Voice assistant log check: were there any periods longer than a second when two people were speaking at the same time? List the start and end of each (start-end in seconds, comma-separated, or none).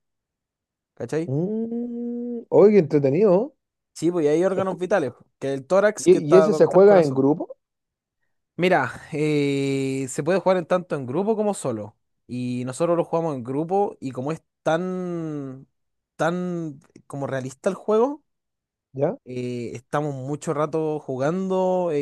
6.0-7.3